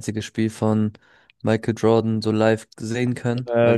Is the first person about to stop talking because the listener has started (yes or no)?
no